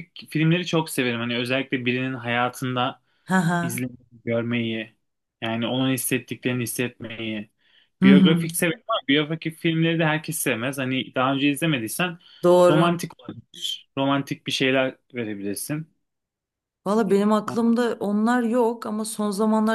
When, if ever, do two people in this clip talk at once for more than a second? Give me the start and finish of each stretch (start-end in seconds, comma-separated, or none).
none